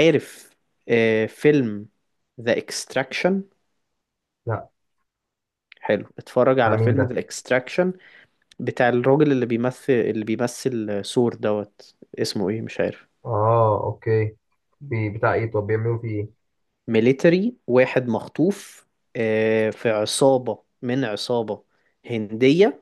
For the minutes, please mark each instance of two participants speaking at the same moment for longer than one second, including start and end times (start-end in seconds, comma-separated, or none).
none